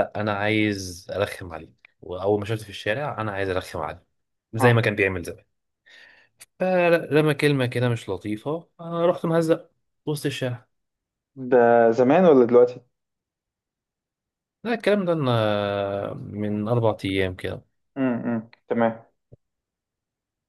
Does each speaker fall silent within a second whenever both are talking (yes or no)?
yes